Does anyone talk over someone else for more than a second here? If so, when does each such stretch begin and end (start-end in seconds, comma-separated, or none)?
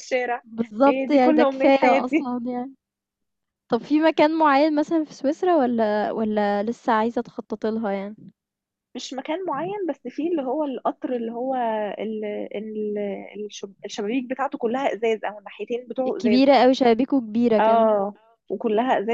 0.9-2.3